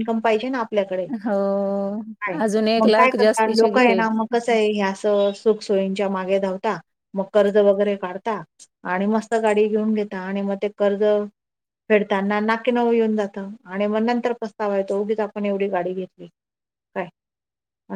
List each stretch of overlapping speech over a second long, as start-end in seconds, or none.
none